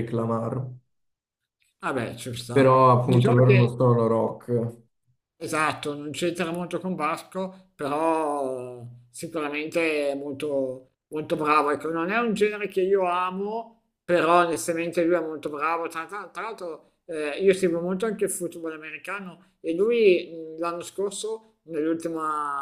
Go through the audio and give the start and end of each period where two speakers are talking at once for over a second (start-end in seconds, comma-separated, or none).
2.5-3.8